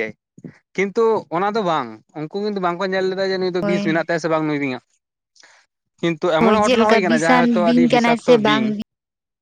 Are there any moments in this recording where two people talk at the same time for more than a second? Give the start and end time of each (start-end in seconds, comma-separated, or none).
6.4-8.7